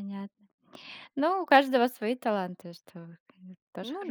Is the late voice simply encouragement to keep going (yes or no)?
no